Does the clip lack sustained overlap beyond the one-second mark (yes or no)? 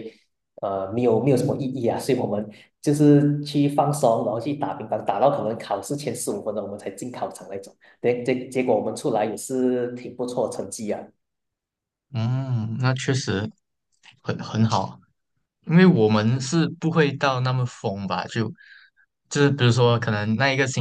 yes